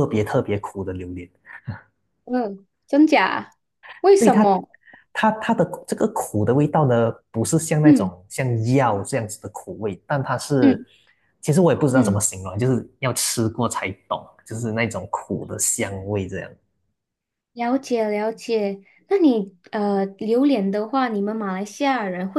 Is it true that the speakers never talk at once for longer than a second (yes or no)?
yes